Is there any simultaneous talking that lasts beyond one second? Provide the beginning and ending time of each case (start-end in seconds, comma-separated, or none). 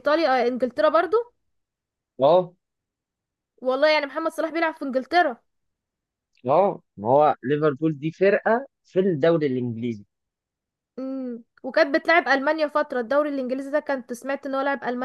none